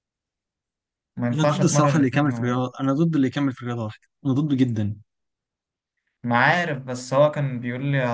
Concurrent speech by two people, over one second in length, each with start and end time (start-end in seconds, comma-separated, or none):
1.3-2.6